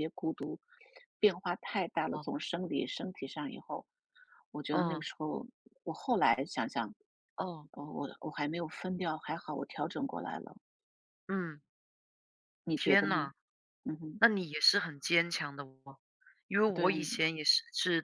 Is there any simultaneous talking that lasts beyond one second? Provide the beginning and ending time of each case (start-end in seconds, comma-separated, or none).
none